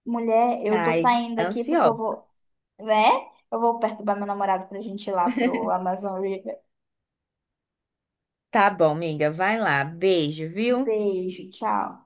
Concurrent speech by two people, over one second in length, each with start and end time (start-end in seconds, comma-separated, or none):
0.7-2.2